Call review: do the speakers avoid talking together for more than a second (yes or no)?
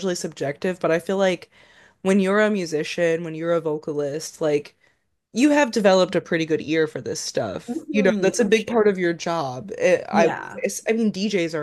no